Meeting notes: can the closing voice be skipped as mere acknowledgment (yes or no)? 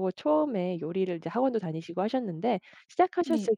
yes